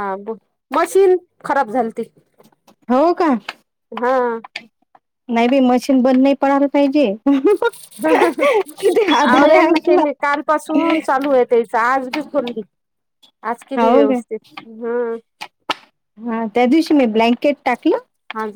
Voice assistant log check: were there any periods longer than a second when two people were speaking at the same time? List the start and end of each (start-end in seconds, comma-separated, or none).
8.8-10.0